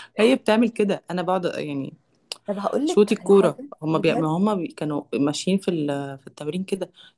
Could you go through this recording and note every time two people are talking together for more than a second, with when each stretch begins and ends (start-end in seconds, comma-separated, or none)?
2.9-4.3